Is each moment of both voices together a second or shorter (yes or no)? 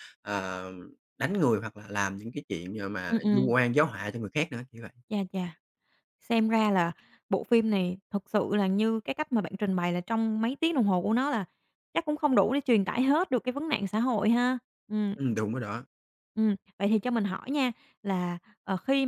yes